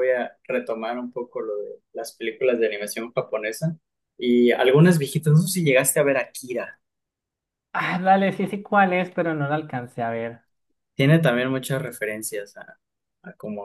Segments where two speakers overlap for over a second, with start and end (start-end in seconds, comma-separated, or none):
none